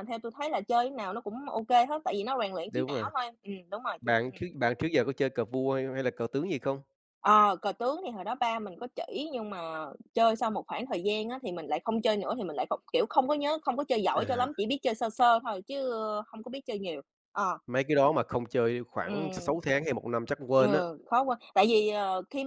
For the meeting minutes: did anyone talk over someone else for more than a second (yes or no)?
no